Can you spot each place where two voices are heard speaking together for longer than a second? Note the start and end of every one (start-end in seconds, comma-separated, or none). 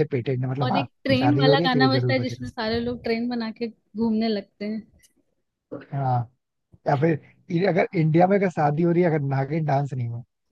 0.6-2.5